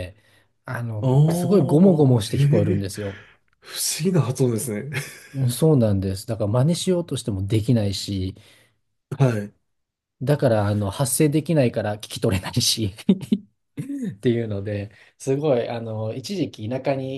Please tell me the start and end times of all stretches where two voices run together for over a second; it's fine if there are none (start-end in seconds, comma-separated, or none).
1.0-2.9